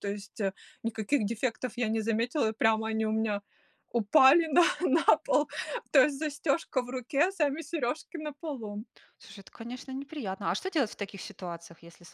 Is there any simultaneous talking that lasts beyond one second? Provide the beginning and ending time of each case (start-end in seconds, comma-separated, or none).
none